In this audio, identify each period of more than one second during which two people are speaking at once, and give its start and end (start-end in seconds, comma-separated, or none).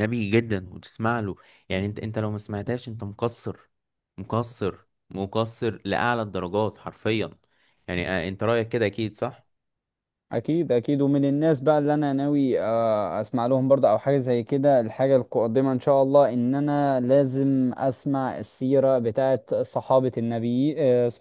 none